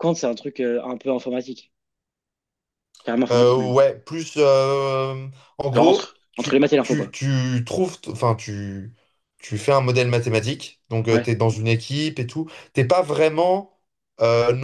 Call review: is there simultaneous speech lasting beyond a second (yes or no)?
yes